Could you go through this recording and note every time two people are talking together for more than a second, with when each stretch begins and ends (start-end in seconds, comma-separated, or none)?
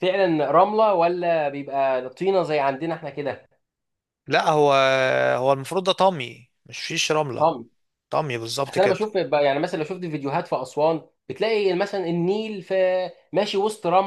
none